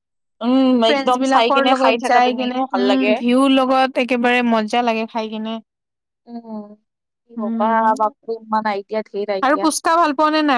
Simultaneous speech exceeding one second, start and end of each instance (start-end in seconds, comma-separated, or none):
0.9-3.1